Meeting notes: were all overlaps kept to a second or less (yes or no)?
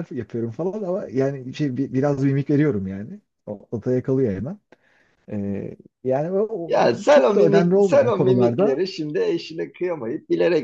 no